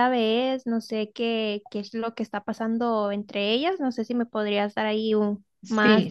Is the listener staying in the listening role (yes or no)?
no